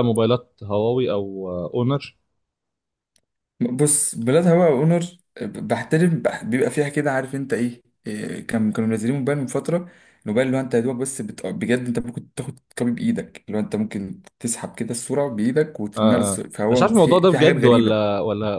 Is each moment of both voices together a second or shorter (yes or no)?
no